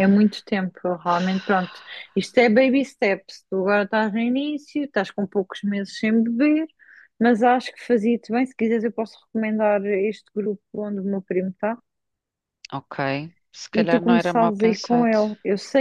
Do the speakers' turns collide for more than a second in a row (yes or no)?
yes